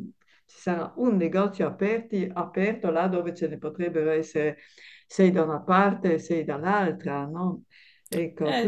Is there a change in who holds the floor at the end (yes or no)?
yes